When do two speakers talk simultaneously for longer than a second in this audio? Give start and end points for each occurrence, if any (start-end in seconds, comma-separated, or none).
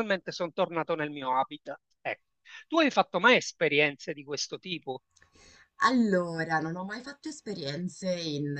none